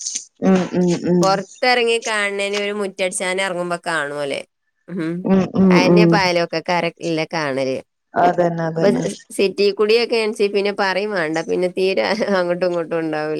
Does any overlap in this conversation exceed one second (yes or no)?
no